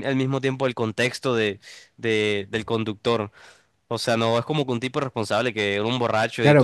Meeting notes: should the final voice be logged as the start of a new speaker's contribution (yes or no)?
yes